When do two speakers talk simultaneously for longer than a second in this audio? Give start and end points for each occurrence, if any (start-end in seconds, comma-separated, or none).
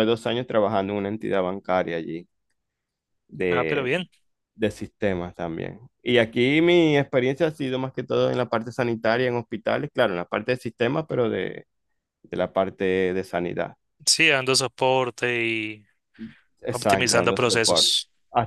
16.7-17.9